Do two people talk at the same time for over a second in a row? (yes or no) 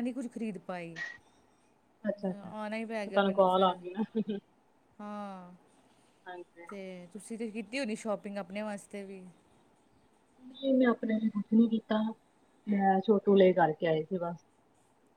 yes